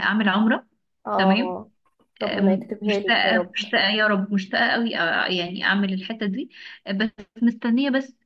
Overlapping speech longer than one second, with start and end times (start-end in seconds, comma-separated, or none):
2.3-3.5